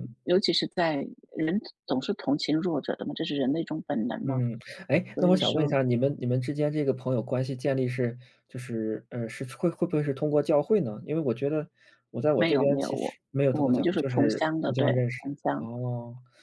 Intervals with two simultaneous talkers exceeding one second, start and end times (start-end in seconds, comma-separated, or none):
12.3-15.7